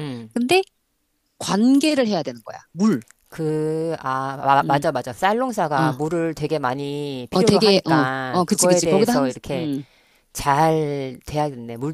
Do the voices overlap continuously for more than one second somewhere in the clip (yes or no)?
yes